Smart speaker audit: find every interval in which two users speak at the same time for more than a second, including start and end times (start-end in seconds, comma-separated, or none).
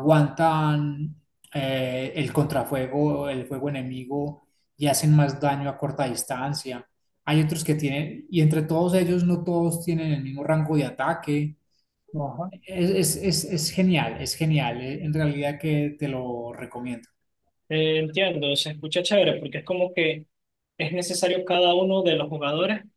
none